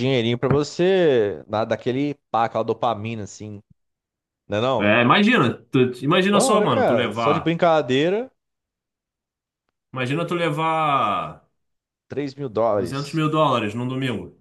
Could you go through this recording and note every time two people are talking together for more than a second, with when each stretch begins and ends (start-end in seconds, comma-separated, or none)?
6.3-7.5